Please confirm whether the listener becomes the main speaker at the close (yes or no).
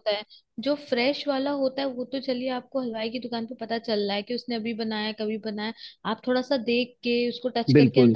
no